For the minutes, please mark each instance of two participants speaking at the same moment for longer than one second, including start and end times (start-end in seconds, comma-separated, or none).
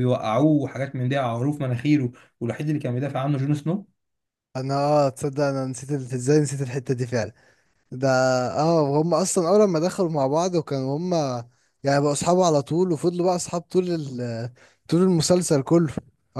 none